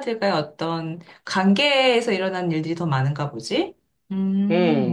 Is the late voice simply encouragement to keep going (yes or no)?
no